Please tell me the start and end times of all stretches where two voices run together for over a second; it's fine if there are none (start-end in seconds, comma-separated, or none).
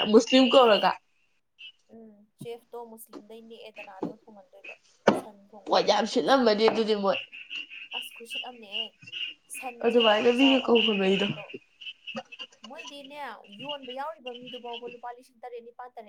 9.8-11.3